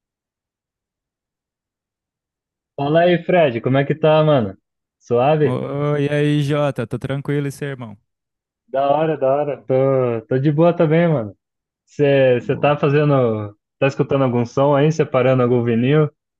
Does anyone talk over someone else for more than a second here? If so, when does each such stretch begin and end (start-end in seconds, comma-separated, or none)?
none